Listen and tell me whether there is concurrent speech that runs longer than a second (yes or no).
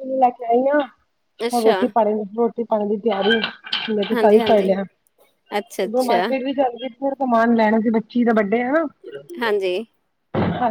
no